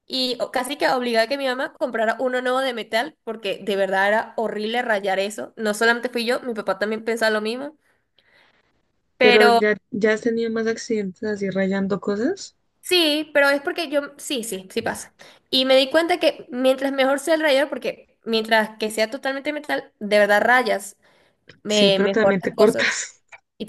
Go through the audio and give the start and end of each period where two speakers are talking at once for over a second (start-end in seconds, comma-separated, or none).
21.7-23.0